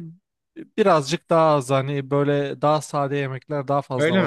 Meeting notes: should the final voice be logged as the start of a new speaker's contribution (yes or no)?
yes